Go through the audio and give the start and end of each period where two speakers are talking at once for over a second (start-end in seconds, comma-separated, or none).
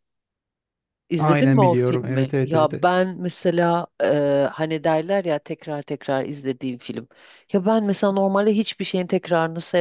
1.2-2.9